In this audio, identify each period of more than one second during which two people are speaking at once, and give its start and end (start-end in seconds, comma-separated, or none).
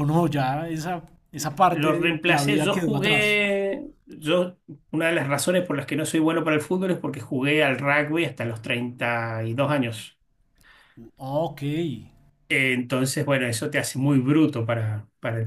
1.7-3.4